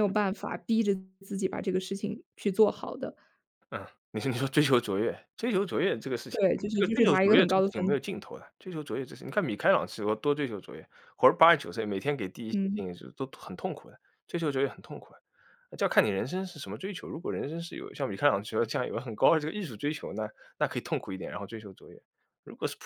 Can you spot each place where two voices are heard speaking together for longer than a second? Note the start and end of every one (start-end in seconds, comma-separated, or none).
6.3-8.0